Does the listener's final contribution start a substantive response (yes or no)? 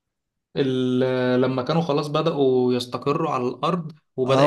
yes